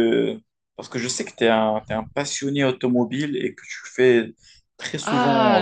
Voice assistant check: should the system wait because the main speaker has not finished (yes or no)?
no